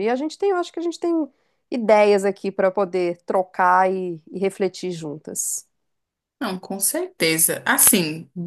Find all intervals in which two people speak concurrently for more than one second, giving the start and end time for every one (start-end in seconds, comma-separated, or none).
none